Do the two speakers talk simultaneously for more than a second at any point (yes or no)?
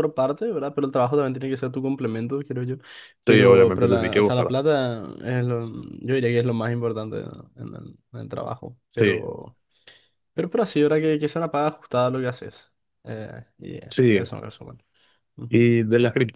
yes